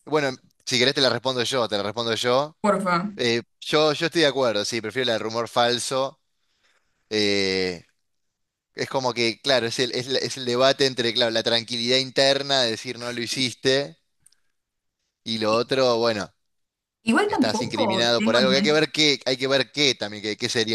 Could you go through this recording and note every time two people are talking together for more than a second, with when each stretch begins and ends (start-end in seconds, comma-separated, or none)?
17.3-18.8